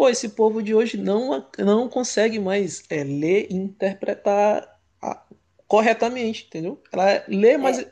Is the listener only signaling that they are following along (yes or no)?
yes